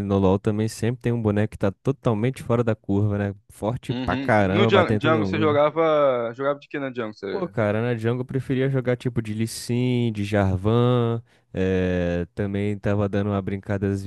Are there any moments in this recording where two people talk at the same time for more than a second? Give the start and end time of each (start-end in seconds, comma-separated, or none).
3.9-5.6